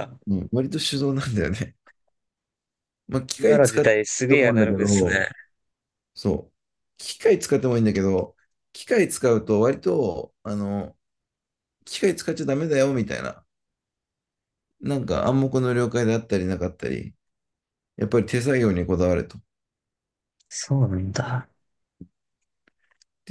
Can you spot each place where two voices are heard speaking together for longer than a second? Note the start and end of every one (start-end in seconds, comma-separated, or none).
3.4-5.2